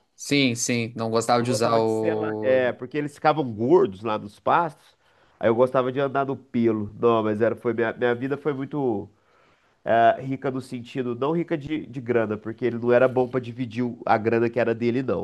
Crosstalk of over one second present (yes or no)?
yes